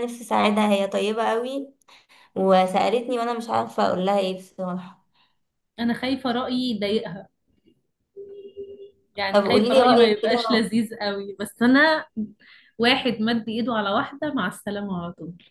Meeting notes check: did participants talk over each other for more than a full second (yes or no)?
yes